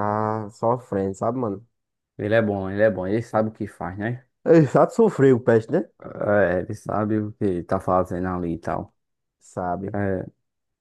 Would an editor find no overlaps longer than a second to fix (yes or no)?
yes